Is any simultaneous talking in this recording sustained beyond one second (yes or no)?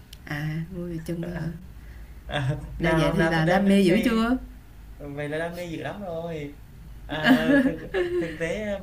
yes